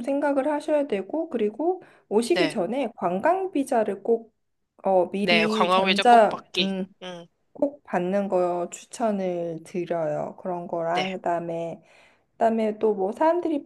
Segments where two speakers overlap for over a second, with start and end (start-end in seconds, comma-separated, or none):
5.2-6.8